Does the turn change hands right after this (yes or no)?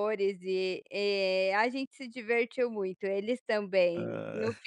no